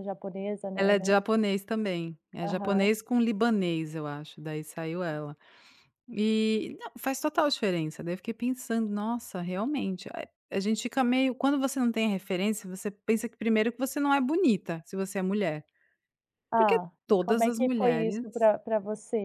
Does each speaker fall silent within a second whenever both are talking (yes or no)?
no